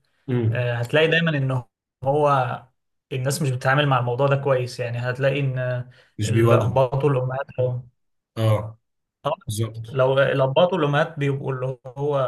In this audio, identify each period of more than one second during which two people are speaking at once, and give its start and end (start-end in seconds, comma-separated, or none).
none